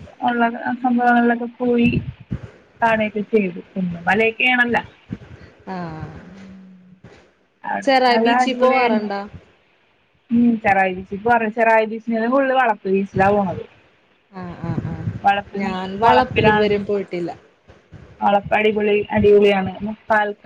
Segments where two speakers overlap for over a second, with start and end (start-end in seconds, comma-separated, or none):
15.3-16.6